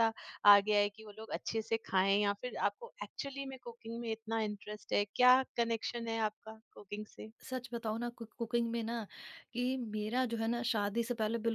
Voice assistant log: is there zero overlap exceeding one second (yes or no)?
yes